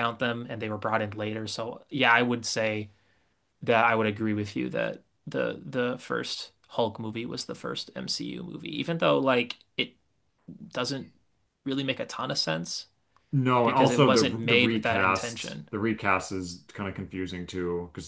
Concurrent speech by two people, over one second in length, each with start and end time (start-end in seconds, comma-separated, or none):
13.6-15.7